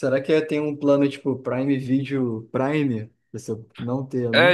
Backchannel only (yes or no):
no